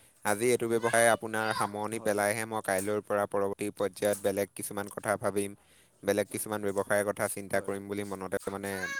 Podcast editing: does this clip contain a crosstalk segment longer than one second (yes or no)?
yes